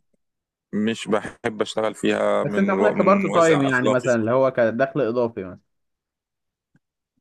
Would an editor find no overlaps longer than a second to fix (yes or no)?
no